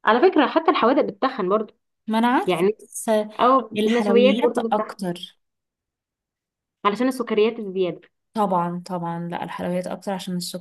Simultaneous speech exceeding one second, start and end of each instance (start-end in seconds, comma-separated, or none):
3.8-5.1